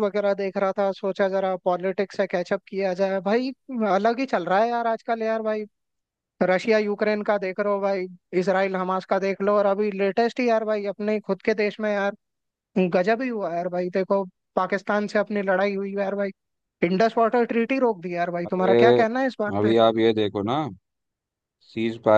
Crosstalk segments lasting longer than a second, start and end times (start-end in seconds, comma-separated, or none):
none